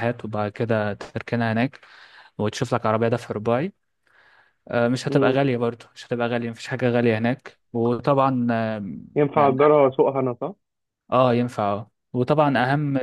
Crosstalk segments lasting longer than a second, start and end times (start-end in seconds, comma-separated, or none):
none